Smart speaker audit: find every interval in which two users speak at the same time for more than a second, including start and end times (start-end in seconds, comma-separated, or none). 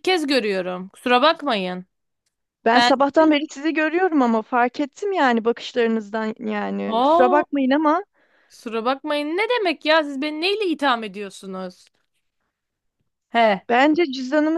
none